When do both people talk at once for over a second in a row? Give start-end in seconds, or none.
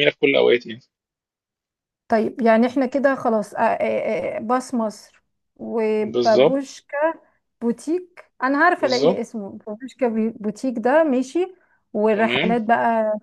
none